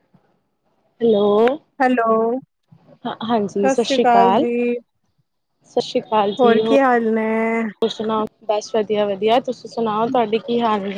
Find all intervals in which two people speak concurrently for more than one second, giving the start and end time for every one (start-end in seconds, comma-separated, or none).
3.0-4.5, 6.4-7.6